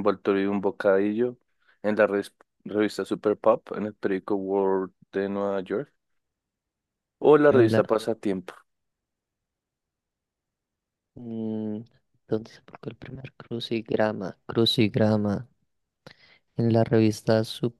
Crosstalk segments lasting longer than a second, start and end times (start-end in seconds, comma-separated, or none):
none